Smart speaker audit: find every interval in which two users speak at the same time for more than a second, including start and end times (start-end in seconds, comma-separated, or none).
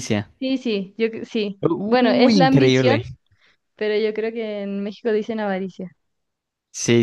1.7-3.0